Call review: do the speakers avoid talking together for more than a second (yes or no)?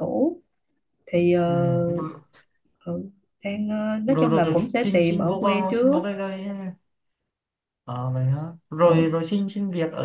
no